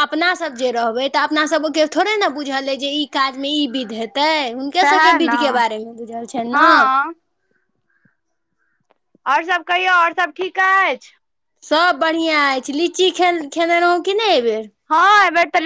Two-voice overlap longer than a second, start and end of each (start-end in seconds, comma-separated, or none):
none